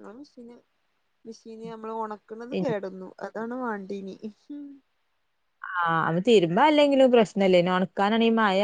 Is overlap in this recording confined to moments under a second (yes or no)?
yes